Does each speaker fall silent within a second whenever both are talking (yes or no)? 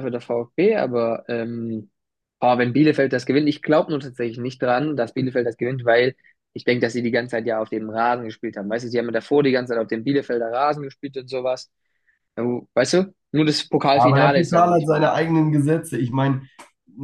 no